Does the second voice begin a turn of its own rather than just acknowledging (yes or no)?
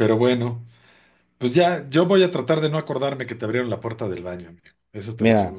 yes